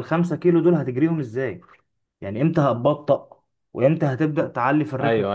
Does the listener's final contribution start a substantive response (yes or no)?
yes